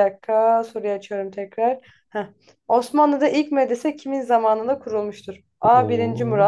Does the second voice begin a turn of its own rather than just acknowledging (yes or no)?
no